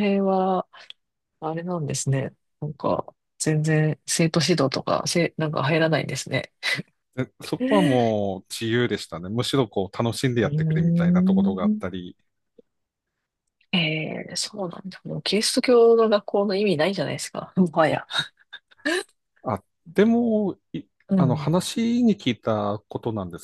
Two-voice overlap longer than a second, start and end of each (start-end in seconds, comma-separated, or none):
10.4-12.0